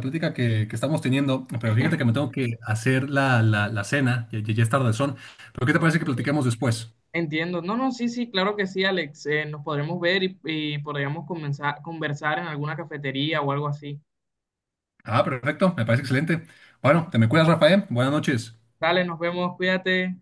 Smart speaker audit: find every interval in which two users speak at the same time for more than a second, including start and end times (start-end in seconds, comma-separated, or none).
none